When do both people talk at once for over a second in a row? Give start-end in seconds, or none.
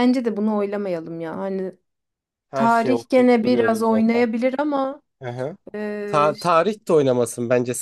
2.5-4.2